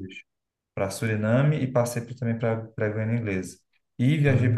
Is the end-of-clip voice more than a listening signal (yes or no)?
no